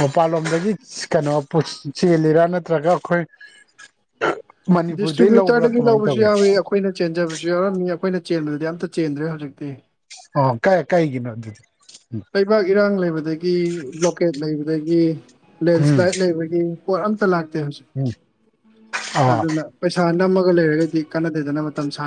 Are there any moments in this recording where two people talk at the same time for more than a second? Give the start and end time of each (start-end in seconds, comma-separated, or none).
5.0-6.3